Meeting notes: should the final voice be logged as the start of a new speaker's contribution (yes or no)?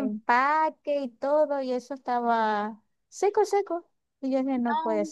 yes